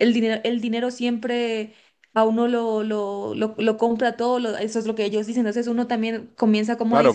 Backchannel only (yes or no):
no